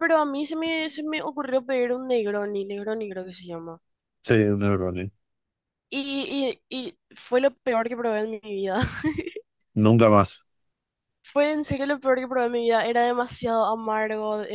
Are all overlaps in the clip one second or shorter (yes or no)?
yes